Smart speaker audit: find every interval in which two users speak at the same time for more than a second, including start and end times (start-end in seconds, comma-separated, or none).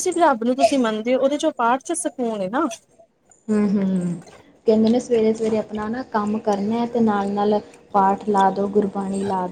none